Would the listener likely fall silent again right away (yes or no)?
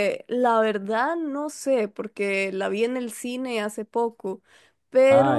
yes